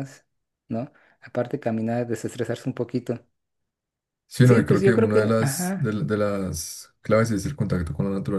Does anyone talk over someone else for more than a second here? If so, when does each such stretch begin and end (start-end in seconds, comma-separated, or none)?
4.4-6.0